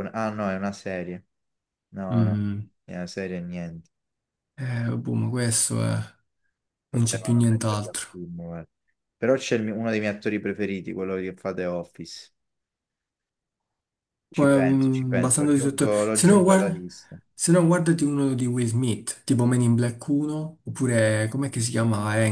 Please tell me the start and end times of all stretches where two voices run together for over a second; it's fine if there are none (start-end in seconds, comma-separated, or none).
6.9-8.2, 14.3-16.8